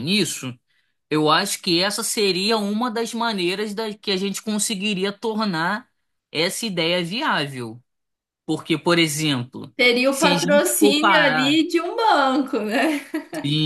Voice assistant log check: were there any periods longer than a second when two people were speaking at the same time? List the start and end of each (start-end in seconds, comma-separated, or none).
9.8-11.6